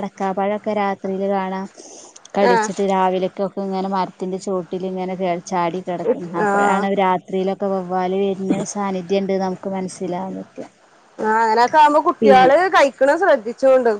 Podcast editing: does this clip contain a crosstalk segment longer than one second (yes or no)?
no